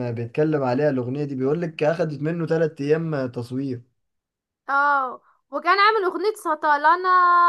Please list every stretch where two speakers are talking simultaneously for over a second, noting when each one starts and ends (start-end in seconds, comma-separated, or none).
none